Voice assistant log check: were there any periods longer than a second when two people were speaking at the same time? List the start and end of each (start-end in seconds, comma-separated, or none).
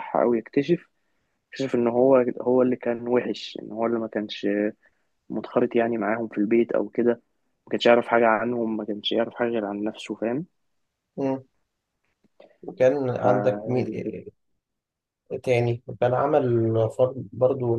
none